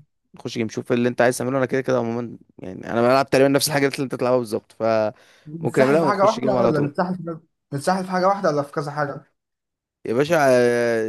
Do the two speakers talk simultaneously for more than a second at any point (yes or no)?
yes